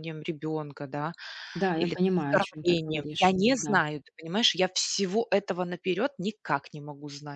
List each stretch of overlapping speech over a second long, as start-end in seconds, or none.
1.8-3.8